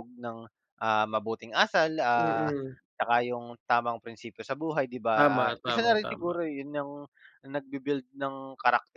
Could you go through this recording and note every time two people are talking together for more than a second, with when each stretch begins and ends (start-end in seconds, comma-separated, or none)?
5.1-6.4